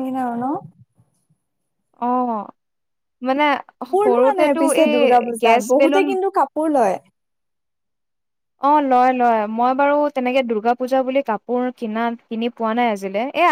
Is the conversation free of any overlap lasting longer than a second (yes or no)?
no